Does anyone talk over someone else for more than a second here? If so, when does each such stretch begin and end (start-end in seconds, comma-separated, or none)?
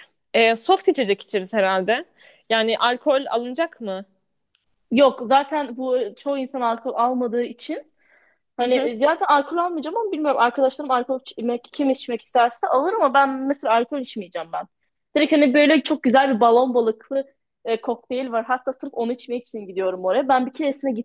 none